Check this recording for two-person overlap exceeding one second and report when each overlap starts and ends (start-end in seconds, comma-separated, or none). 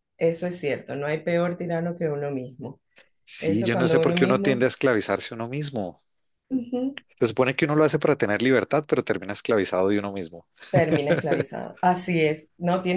3.4-4.6